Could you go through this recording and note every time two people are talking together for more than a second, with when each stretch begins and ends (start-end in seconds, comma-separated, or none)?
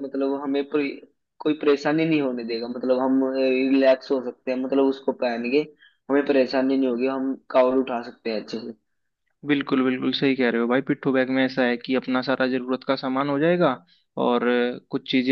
none